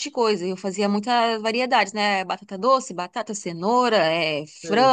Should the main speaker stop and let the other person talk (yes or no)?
no